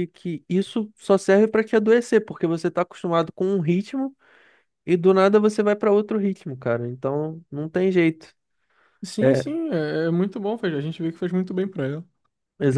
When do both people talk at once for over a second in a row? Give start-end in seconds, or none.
none